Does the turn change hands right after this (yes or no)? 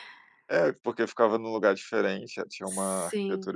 no